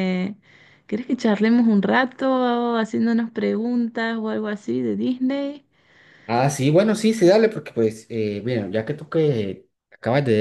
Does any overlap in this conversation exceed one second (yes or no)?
no